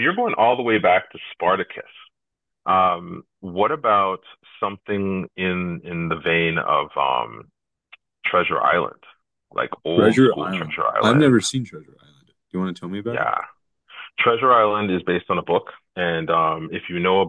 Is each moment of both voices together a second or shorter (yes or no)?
no